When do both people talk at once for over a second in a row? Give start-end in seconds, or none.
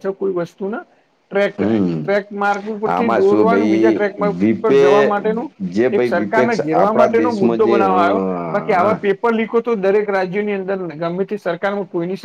2.9-4.8, 6.0-9.0